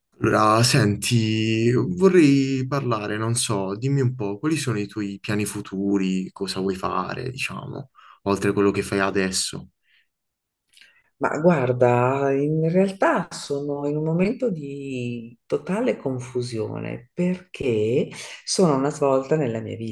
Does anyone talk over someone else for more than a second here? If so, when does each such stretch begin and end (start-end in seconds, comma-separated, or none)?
none